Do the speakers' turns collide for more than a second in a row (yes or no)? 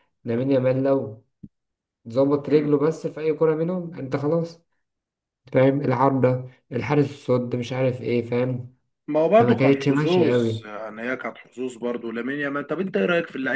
yes